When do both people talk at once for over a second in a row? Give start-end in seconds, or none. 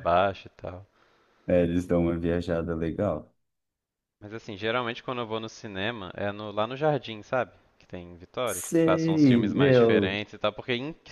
8.4-10.2